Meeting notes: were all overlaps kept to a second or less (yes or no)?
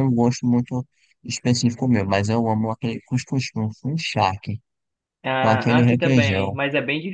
no